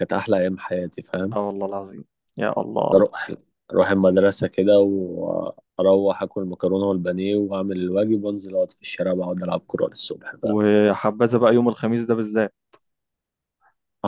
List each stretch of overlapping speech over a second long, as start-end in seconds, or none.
none